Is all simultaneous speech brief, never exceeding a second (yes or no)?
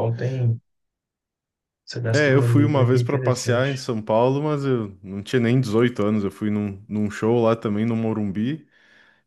no